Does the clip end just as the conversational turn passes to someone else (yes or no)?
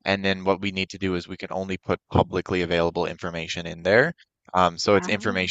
no